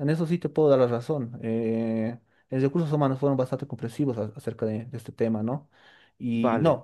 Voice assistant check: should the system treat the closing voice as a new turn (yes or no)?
no